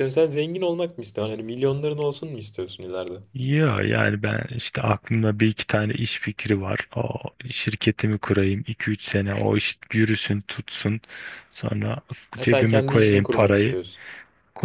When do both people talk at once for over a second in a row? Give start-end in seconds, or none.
12.4-13.8